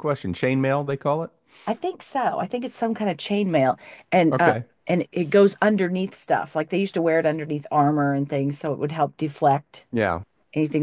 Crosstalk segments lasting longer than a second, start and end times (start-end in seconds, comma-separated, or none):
none